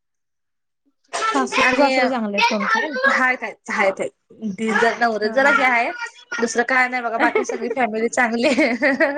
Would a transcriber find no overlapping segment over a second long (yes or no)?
yes